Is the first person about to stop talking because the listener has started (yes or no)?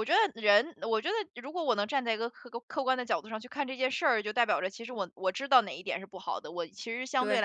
no